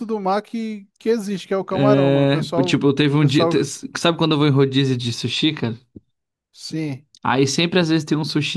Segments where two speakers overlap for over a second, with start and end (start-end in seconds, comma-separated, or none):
1.7-3.5